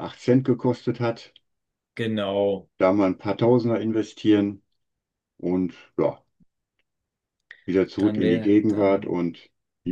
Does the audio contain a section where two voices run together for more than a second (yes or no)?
yes